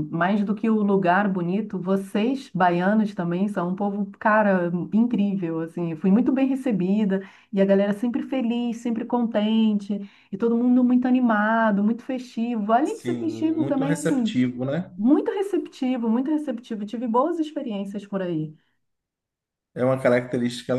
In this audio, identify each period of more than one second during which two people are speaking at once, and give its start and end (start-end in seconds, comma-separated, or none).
12.8-14.4